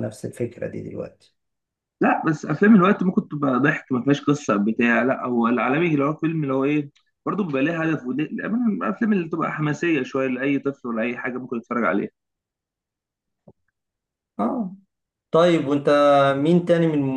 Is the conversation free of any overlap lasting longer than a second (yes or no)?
yes